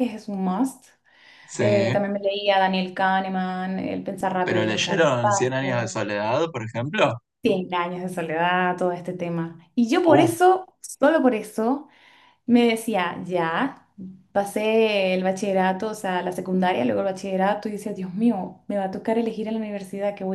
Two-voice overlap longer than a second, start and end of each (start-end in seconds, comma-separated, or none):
4.4-6.0